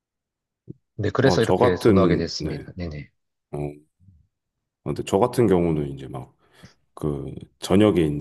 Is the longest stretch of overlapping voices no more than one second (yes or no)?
no